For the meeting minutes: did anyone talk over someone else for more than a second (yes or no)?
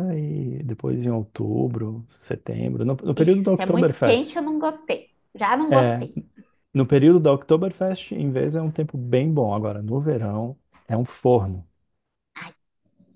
yes